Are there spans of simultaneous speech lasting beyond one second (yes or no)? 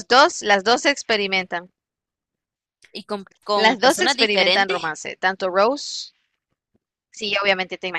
yes